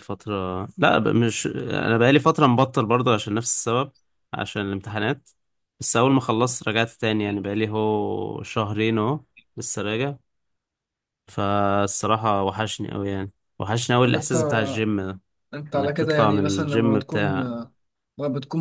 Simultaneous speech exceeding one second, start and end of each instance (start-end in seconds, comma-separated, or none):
15.8-17.3